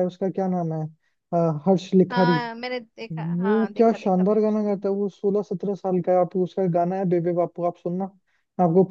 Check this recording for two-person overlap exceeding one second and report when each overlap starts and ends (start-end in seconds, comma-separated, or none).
3.1-4.7